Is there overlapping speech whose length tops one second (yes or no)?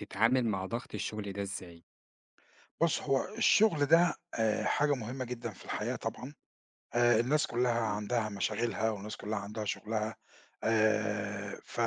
no